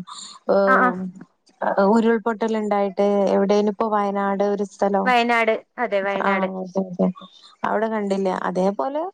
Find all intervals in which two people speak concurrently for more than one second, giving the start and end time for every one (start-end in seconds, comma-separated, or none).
none